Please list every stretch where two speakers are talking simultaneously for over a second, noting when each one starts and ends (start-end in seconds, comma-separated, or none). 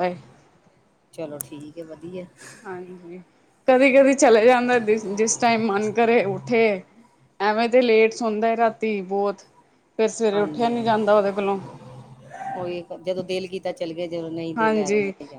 none